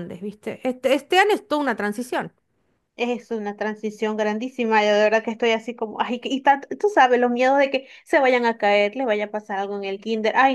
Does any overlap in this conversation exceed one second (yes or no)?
no